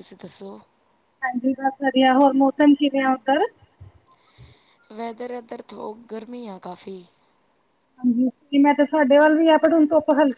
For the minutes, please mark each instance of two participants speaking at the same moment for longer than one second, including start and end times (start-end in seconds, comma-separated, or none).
none